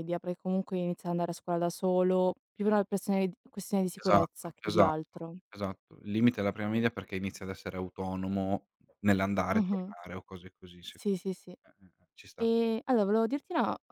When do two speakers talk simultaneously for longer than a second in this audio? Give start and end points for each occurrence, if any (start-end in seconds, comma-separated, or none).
4.0-5.3